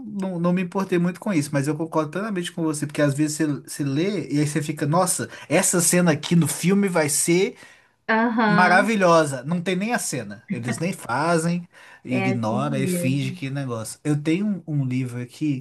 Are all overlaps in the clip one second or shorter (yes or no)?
no